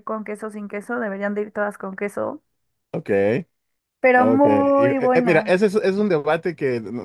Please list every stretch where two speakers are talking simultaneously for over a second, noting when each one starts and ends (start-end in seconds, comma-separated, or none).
4.2-5.7